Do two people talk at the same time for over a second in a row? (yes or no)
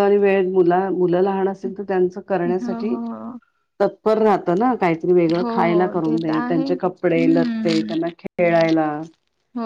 yes